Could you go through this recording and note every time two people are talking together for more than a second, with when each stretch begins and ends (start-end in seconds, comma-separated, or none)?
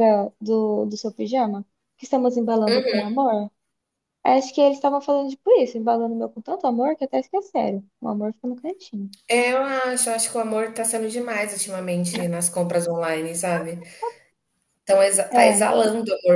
none